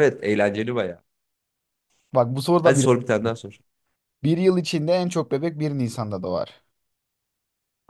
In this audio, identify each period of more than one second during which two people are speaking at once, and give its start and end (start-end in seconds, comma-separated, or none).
none